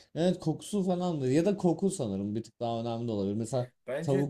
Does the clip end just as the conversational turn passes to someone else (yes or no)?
no